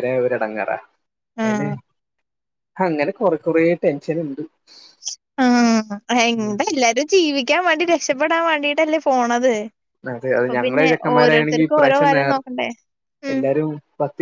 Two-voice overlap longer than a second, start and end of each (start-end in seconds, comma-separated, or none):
10.4-12.4